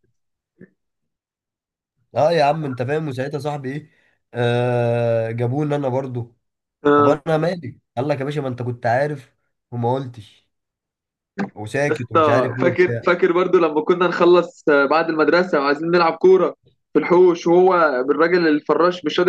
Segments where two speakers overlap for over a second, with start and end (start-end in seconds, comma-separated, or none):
11.9-13.1